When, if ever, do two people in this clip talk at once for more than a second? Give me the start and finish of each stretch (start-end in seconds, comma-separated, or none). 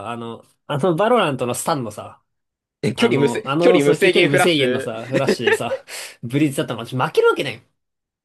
3.0-4.9